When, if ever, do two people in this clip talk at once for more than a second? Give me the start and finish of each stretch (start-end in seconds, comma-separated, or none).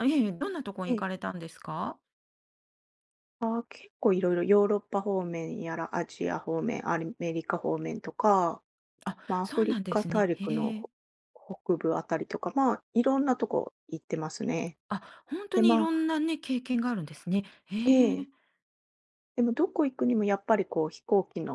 9.3-10.7